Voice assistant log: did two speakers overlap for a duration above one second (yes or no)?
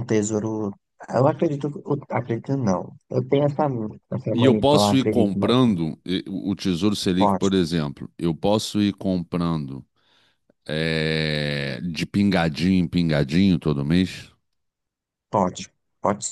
yes